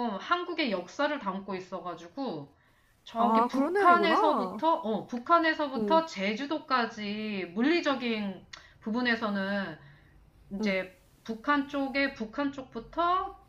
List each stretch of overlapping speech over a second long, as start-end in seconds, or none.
3.2-4.6